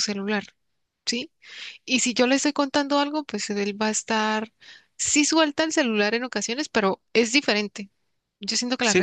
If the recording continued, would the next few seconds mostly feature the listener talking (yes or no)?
yes